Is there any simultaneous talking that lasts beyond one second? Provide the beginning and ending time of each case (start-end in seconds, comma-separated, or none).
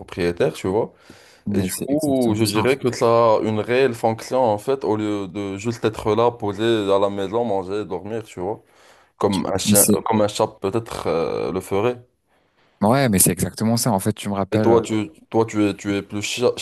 1.5-2.9